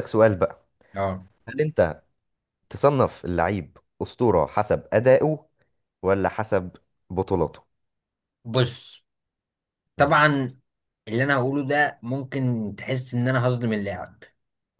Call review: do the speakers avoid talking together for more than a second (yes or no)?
yes